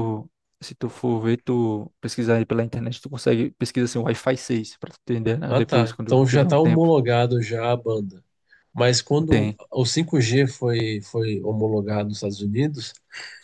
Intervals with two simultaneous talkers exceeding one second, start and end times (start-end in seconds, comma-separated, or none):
5.5-6.9